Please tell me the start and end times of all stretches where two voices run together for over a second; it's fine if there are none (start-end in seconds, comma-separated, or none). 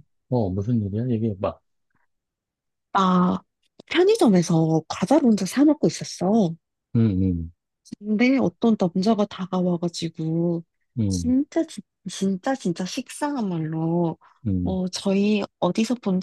none